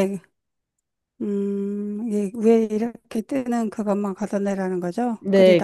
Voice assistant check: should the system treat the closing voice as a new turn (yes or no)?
yes